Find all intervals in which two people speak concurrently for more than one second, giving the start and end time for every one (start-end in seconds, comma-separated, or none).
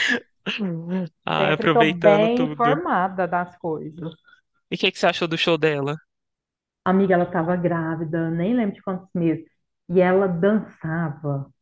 1.4-2.8